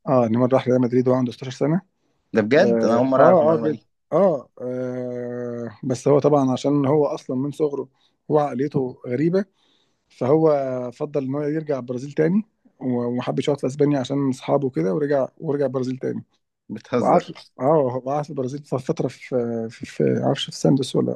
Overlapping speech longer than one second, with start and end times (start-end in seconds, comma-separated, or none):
2.5-3.9